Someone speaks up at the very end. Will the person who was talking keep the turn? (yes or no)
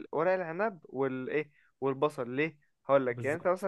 yes